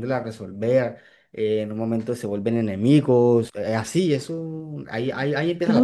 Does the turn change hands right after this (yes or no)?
yes